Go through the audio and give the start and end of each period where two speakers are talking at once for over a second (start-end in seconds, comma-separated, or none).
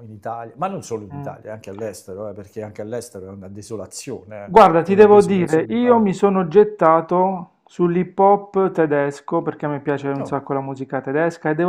4.4-6.1